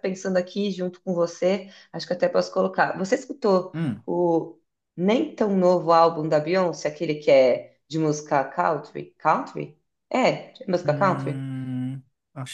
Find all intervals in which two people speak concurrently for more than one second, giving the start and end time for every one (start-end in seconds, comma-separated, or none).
none